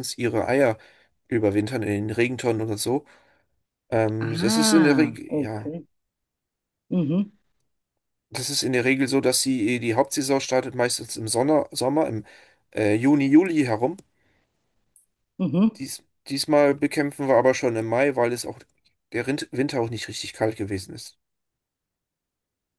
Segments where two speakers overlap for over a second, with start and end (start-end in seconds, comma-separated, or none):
4.2-5.7